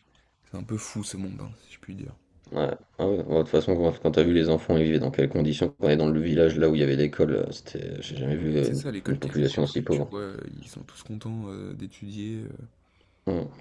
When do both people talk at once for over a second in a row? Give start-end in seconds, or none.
8.6-10.1